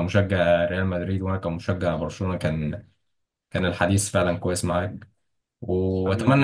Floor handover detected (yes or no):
no